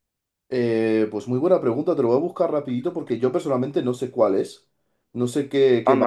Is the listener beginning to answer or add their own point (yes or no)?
yes